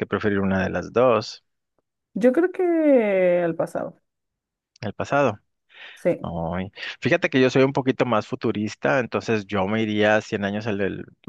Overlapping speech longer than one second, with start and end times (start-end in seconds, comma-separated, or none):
none